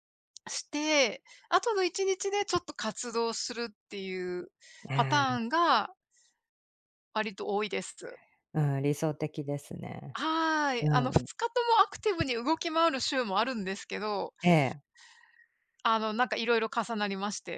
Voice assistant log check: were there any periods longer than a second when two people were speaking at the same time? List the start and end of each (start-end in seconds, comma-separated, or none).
none